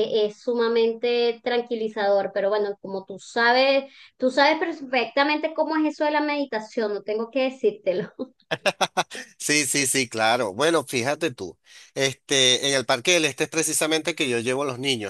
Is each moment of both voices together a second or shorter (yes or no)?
yes